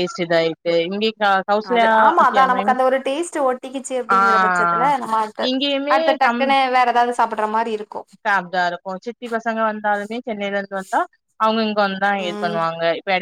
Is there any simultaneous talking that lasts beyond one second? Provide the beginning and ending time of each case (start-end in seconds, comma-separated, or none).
none